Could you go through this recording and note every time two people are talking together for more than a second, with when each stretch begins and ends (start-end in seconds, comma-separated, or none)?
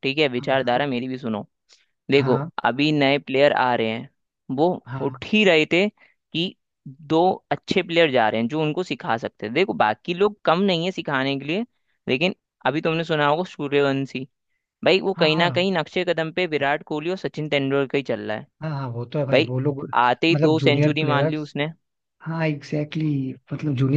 20.3-21.5